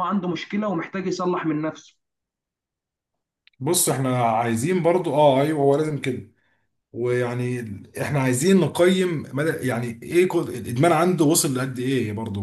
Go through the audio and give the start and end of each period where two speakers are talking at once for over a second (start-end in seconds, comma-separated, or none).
none